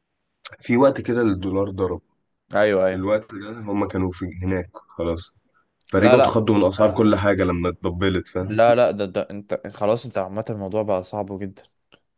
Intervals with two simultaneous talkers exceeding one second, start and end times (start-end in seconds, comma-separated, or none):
none